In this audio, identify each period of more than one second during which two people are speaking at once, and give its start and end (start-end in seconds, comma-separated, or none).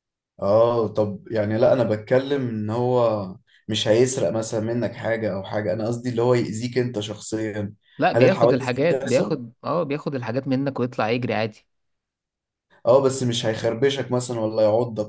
8.1-9.4